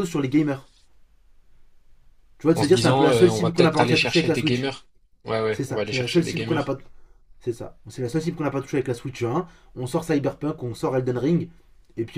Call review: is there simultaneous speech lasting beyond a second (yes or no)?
yes